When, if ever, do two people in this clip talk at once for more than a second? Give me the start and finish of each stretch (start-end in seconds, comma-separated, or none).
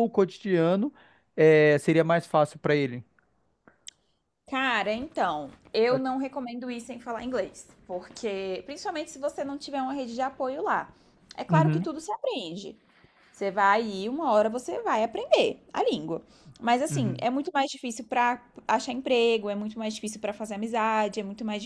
none